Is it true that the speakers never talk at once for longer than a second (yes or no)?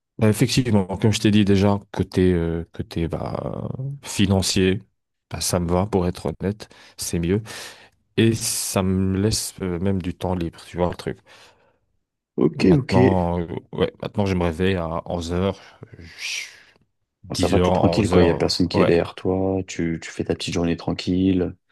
no